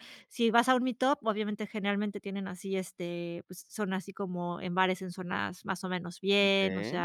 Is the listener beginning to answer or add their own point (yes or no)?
no